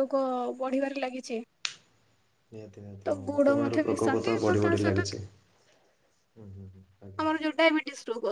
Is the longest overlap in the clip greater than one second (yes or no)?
yes